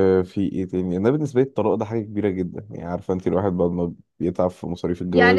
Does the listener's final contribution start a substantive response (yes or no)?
yes